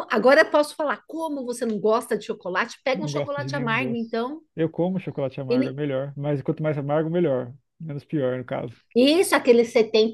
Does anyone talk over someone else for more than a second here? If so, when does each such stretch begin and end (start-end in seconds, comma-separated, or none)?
2.9-4.2